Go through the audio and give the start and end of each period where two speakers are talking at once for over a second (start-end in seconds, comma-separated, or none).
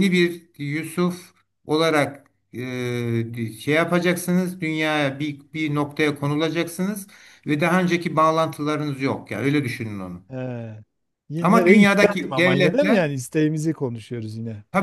11.4-13.1